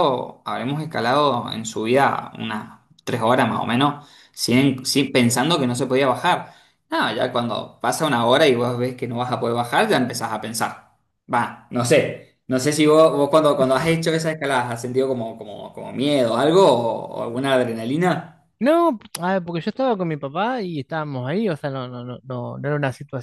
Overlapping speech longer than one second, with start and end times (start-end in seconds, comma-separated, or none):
none